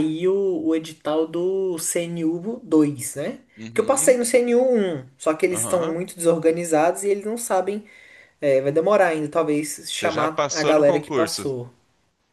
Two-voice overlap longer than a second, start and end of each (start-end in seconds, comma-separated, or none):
10.0-11.4